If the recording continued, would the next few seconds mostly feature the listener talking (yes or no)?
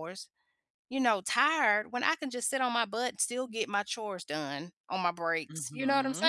yes